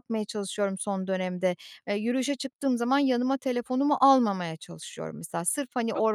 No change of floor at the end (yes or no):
yes